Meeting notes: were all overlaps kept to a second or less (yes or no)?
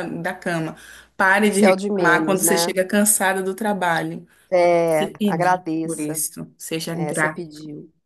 no